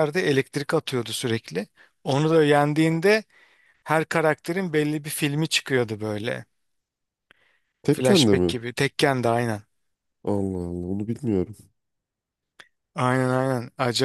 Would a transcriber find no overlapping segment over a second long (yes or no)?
yes